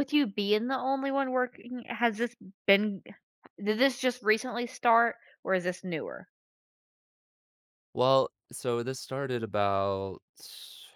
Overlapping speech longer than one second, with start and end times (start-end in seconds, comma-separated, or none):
none